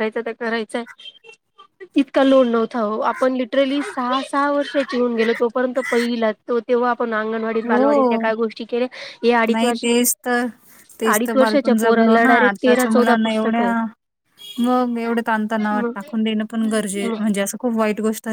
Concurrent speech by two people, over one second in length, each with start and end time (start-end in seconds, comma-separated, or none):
11.1-13.7